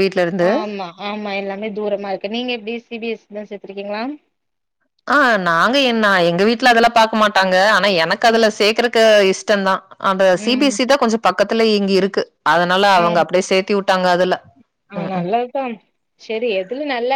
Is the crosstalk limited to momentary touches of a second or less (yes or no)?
yes